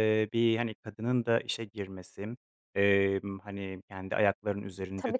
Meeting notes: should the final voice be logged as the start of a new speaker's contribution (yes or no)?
no